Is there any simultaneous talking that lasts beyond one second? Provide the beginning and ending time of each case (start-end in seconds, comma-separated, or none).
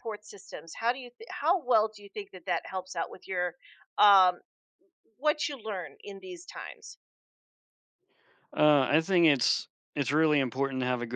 none